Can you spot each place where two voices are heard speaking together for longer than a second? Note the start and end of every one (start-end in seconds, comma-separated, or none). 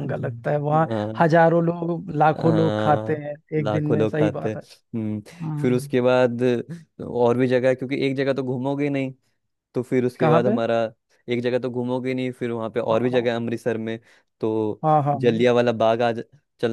2.4-4.5